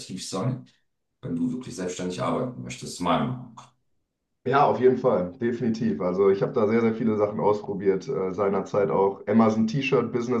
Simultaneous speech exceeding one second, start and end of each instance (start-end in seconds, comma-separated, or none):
none